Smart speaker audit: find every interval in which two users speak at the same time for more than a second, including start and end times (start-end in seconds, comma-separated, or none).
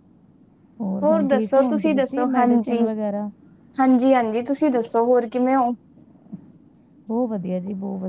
1.0-2.8